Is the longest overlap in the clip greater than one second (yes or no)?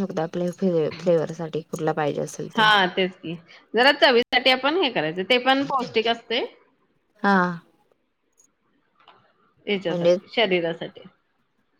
no